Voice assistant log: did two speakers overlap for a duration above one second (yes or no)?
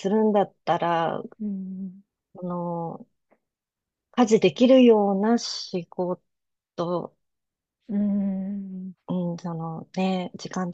no